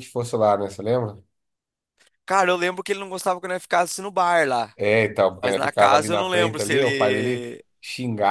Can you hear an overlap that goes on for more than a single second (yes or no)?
yes